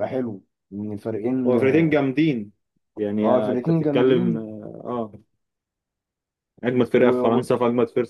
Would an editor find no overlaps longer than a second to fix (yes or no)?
no